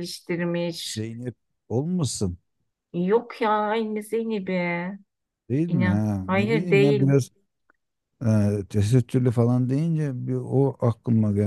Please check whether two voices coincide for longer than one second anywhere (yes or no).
yes